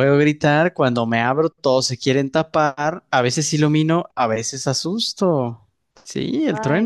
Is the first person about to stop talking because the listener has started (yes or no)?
yes